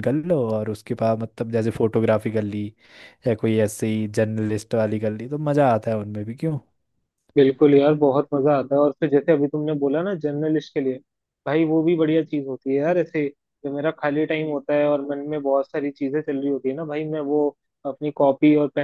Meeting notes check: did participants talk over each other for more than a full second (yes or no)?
no